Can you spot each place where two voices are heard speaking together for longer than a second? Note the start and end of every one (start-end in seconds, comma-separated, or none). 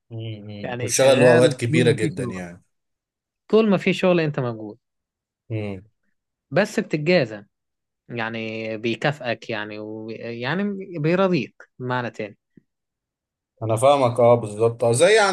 0.6-2.4